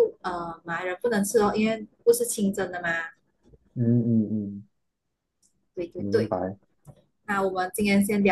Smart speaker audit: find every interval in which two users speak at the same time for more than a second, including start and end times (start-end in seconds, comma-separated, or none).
none